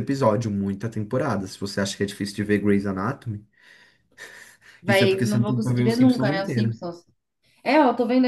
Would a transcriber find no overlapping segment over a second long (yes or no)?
no